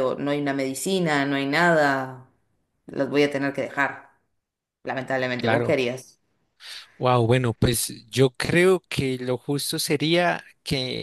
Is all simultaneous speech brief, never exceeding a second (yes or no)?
yes